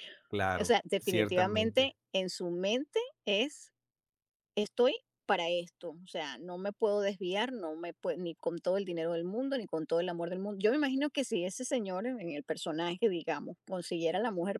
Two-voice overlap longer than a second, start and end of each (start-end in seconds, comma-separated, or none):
0.6-1.9